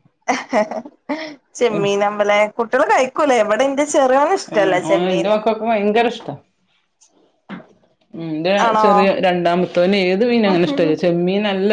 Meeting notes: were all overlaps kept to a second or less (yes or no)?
yes